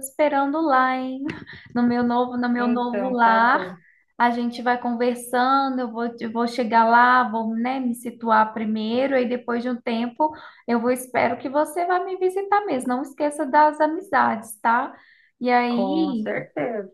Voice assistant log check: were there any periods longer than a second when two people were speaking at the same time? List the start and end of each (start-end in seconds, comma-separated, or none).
2.5-3.7